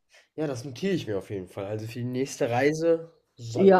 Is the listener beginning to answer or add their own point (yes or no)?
yes